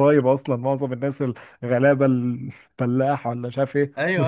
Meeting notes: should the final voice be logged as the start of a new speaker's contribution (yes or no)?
yes